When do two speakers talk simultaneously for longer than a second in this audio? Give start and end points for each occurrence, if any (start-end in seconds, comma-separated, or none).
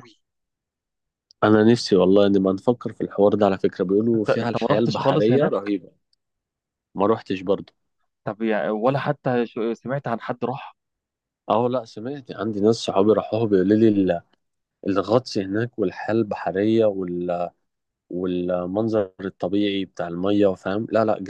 4.1-5.5